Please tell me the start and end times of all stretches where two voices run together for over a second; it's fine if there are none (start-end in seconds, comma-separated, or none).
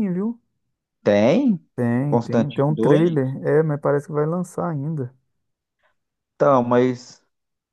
2.0-3.3